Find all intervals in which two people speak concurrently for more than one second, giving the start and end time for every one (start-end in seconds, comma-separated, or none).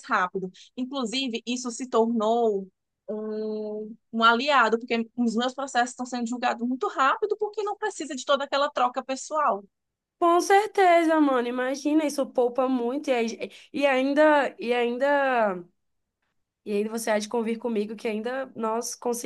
none